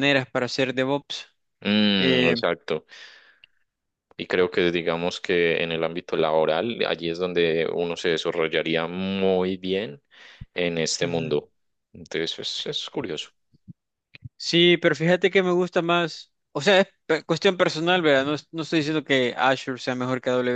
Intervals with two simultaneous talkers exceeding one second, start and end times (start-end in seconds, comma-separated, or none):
none